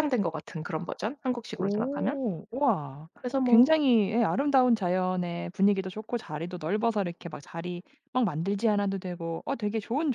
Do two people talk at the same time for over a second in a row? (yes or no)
no